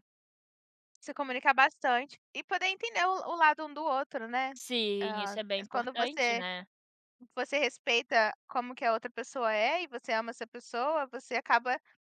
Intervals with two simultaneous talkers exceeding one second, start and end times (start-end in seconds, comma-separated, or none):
5.0-6.4